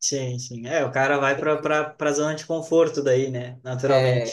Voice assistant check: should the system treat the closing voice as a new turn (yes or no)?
yes